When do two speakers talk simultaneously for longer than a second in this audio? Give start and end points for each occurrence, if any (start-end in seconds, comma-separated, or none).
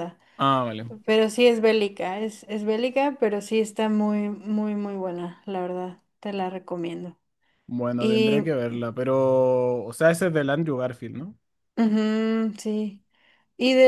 none